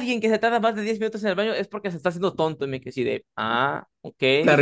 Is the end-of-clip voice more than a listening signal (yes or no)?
yes